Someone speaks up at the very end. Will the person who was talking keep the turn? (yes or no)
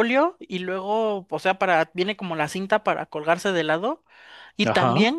yes